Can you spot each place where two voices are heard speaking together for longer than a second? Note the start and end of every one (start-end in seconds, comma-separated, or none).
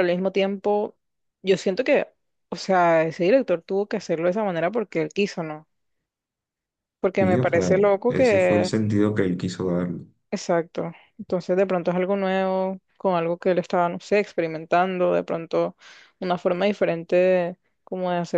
7.2-8.8